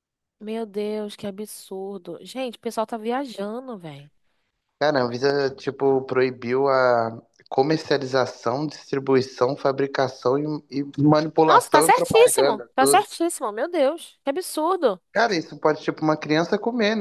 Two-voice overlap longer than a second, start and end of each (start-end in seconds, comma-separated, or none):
11.4-13.1